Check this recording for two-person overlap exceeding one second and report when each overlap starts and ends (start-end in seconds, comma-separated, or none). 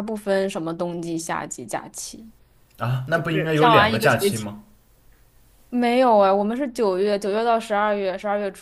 3.1-4.5